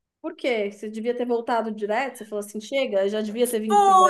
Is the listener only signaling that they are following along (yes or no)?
no